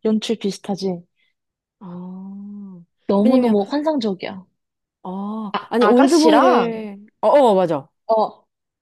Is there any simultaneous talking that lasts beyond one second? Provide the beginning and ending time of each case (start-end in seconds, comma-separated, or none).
5.5-6.8